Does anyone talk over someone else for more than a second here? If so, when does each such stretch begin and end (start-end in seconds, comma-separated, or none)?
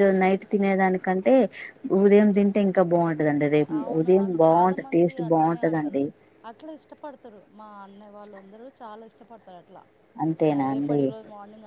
3.8-6.0